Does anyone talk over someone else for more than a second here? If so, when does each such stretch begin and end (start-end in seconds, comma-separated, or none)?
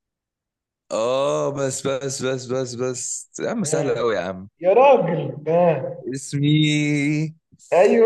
none